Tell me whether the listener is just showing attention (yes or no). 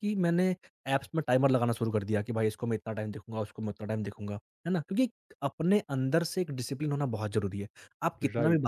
yes